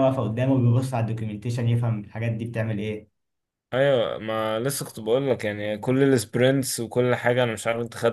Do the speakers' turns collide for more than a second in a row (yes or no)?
no